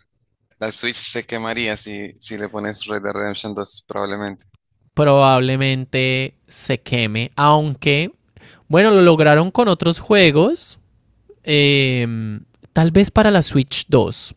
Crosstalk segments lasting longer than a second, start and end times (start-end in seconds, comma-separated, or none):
none